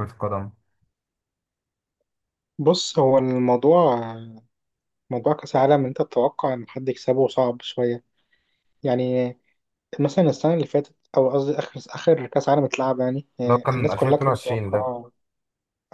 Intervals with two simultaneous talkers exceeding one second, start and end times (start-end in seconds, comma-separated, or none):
13.4-14.8